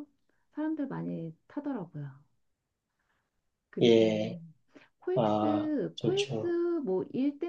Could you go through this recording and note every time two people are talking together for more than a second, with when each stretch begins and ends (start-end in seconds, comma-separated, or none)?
5.2-6.5